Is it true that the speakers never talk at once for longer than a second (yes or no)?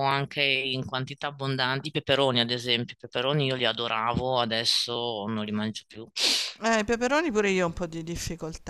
yes